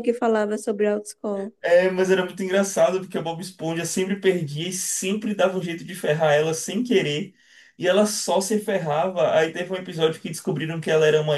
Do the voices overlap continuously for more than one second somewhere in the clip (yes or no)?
no